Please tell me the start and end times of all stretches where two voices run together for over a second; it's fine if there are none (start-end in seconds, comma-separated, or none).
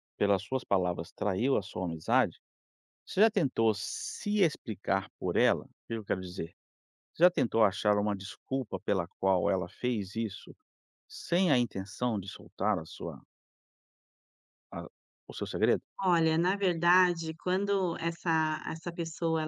none